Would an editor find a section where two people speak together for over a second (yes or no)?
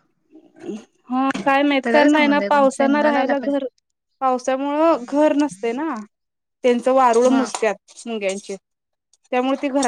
yes